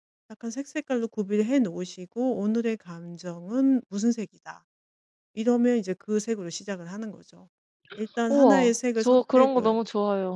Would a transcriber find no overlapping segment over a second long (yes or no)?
no